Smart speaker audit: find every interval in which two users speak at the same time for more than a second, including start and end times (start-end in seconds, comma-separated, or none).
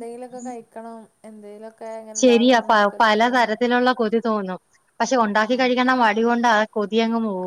none